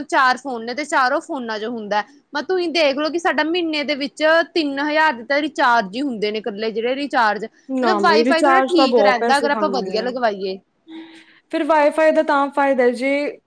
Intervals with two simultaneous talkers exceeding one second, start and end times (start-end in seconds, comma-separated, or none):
7.8-10.1